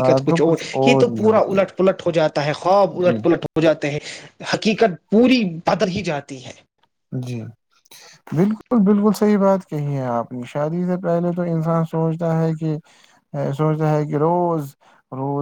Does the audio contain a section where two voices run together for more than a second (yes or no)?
no